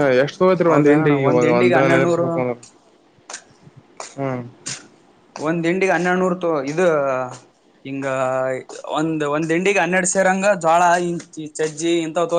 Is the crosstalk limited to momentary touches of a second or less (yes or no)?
no